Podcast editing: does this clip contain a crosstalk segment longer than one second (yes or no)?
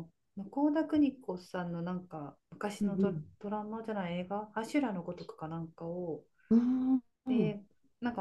no